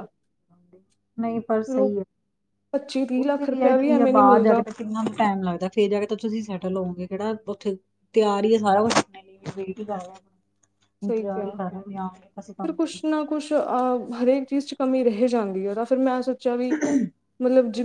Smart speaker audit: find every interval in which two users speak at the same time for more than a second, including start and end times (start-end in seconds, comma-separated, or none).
3.2-4.6